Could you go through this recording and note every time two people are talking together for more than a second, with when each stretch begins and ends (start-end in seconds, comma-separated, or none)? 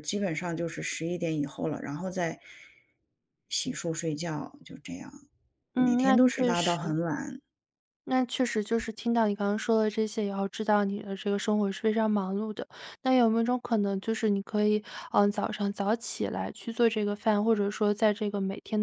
5.7-7.0